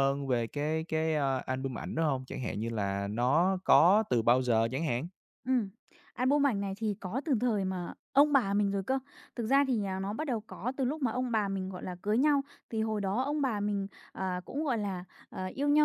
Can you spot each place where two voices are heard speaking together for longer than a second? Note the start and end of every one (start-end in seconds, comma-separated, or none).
none